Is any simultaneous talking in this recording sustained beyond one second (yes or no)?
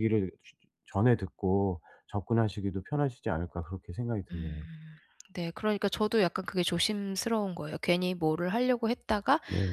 no